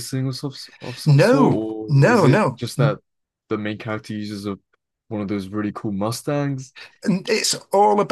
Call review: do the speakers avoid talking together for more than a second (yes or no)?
no